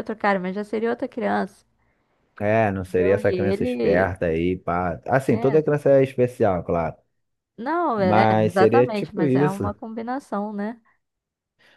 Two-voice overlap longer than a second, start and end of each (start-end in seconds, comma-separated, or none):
2.8-4.1, 8.0-9.7